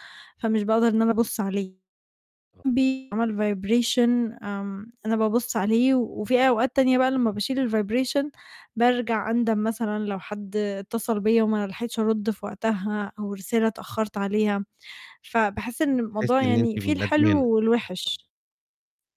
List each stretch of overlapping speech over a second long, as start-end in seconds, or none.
16.1-17.4